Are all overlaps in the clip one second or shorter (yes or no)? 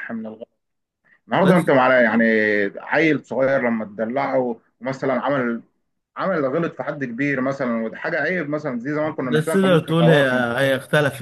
no